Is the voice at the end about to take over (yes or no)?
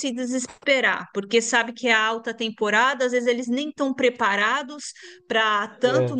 no